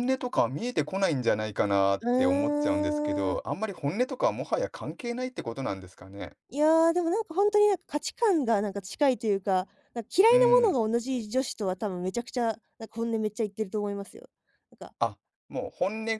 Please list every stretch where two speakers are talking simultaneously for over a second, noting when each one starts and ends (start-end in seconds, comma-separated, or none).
2.0-3.4